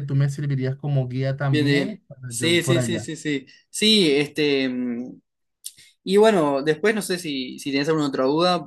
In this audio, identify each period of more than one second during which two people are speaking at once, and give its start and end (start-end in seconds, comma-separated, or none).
1.5-3.1